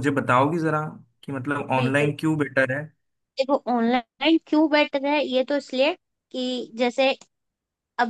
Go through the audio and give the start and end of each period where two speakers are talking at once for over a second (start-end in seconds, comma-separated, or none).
none